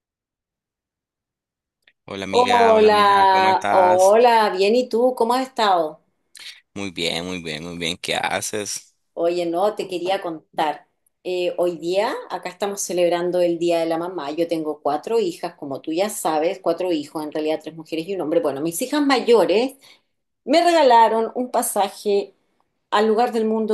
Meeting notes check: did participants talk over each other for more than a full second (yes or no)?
yes